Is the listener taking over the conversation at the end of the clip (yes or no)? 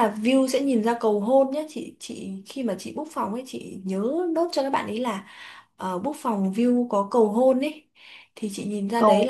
no